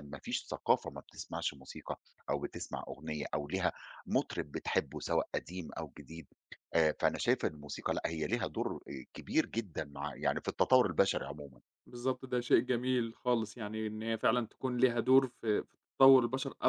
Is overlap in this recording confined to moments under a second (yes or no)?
yes